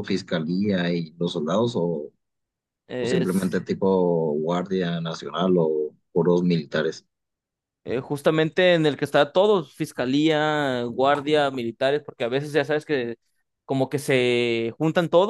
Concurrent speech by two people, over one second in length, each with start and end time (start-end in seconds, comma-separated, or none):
none